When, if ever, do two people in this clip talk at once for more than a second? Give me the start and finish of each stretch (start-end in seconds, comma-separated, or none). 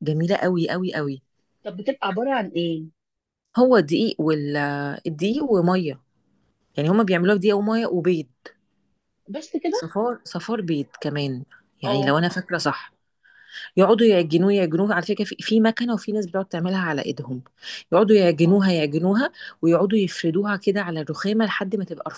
none